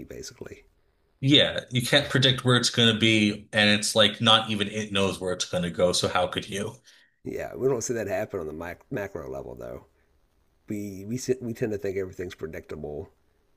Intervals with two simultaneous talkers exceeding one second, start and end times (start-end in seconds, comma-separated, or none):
none